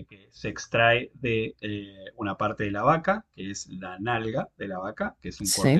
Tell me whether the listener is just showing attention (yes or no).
yes